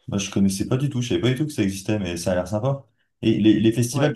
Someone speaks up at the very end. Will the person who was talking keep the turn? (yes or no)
yes